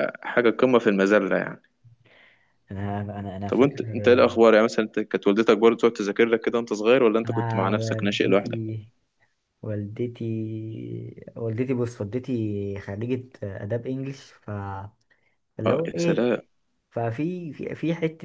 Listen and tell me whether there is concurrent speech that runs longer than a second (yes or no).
yes